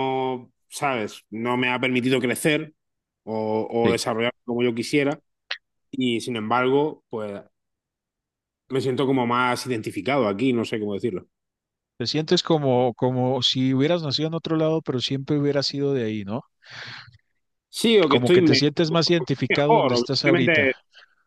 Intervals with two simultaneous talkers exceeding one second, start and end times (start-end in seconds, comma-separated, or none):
19.5-20.7